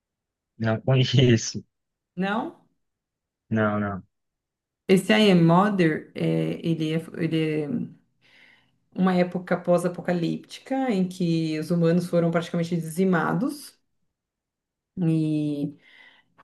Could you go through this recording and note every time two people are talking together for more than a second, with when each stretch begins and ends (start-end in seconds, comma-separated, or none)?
none